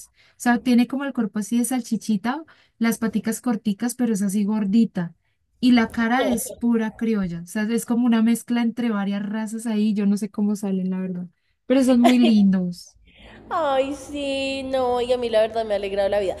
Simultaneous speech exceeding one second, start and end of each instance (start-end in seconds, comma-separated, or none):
none